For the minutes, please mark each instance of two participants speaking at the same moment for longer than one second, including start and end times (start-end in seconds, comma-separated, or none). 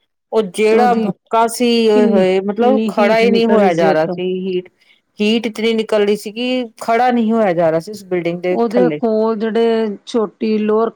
1.9-4.2